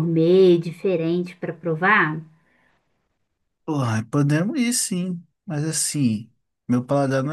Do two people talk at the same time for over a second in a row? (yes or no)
no